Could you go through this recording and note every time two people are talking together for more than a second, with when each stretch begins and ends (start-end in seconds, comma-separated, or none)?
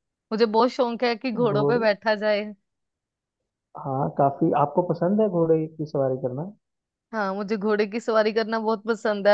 none